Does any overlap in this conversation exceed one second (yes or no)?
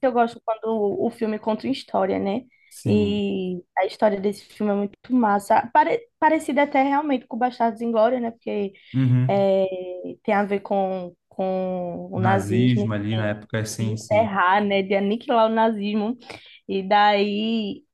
yes